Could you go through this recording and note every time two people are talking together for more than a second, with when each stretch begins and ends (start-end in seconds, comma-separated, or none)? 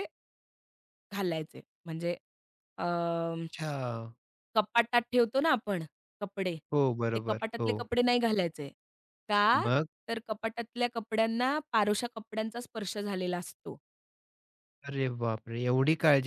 none